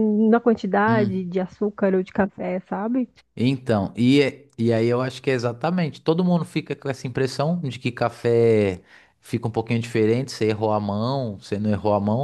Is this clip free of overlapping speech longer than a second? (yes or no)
yes